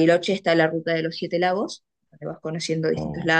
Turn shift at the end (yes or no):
no